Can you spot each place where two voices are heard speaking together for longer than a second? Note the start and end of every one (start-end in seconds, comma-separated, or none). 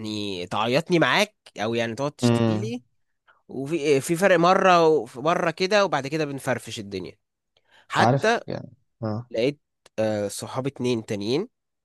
none